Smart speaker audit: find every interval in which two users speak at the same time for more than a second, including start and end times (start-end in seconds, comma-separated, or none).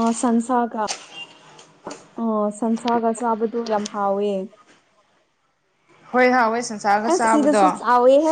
none